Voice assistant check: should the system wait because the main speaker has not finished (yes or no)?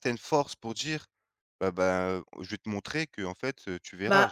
no